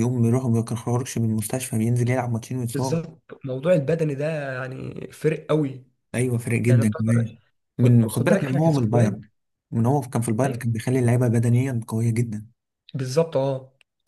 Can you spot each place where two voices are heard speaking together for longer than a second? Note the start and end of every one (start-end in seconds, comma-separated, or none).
7.8-9.2